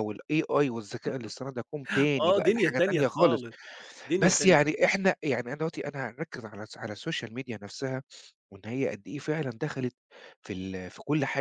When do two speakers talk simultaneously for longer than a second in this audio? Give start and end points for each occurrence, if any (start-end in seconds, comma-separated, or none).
2.2-3.5